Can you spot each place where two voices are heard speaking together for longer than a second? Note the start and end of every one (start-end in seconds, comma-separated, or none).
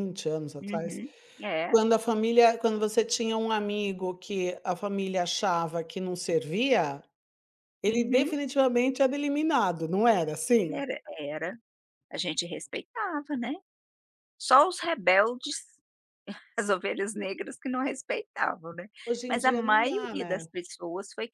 19.3-20.5